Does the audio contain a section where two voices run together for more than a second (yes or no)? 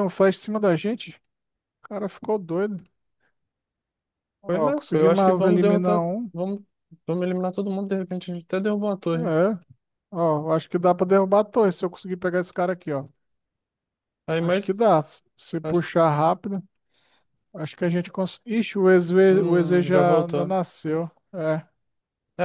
yes